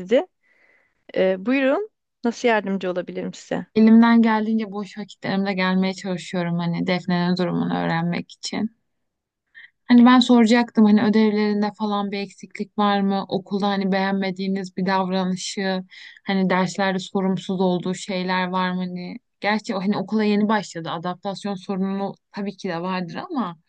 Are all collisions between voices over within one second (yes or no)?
yes